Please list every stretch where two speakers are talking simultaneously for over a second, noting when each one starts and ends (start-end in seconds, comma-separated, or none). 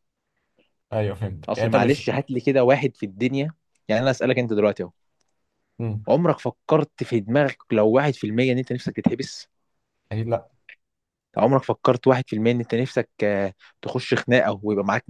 none